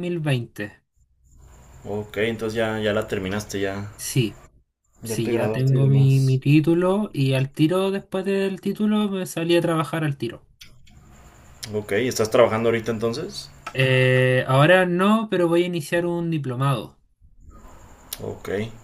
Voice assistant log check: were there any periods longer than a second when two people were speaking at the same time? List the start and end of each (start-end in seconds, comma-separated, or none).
5.0-6.4